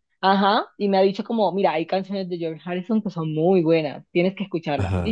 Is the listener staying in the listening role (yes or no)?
yes